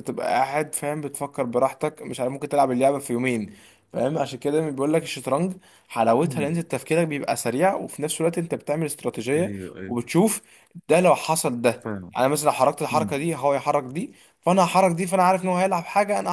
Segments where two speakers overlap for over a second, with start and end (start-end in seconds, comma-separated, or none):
none